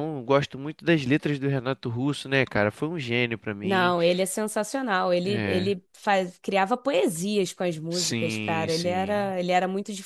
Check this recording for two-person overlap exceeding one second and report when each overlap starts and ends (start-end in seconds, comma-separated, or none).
7.9-9.3